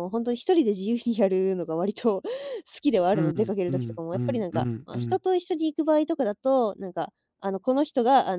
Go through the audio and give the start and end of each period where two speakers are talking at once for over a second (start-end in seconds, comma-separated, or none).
3.1-5.2